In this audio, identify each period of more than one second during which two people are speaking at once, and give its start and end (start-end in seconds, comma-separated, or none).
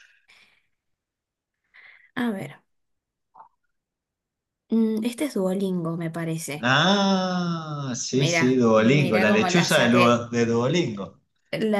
8.1-10.2